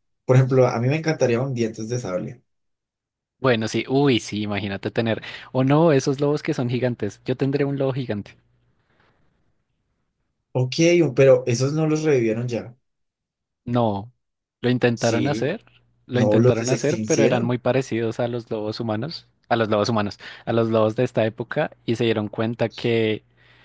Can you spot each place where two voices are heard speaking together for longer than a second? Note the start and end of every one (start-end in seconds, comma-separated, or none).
16.1-17.6